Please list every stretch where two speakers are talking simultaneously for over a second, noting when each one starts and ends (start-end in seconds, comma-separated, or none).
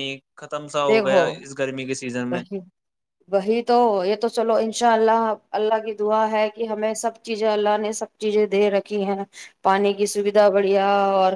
0.9-2.4